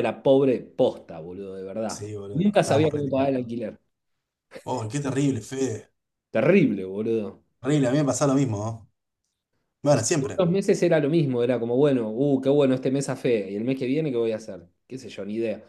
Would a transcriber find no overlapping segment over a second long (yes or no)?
no